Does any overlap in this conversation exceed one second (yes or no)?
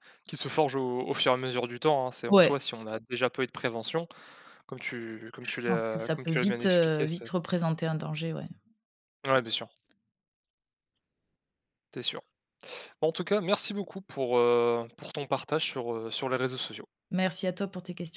yes